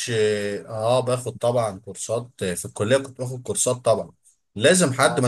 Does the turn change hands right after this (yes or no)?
no